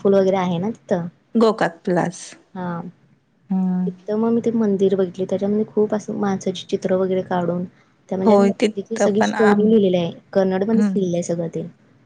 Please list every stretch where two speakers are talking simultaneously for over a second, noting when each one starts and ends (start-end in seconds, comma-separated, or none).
8.2-9.6